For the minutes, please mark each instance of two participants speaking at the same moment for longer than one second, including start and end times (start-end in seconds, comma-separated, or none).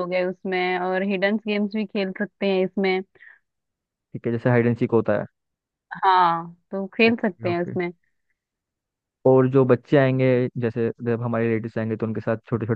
none